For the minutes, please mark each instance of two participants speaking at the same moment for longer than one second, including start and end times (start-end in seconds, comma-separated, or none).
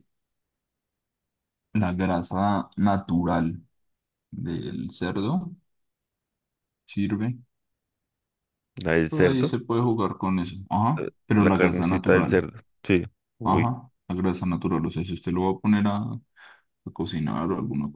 11.0-12.4